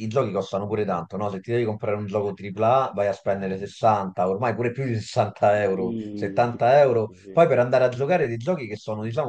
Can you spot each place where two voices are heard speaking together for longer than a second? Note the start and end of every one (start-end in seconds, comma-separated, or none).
5.5-7.4